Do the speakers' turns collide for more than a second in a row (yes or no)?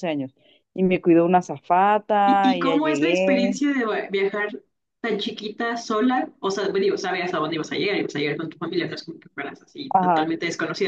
yes